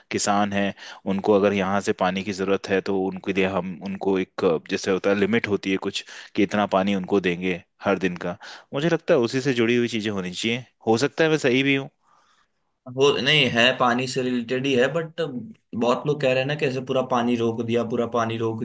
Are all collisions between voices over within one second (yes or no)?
yes